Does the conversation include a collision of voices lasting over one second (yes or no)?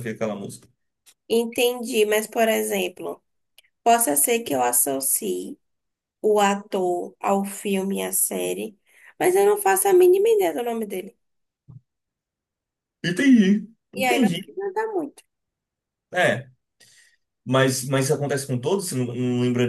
no